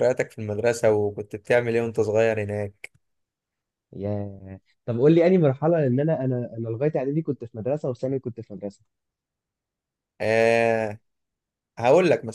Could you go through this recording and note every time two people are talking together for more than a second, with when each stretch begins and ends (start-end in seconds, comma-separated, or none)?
none